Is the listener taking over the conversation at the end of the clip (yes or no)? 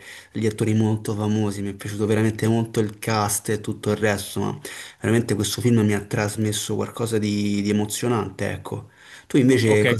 yes